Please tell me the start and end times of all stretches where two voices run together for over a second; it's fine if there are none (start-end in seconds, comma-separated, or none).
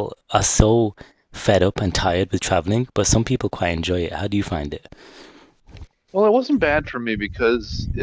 none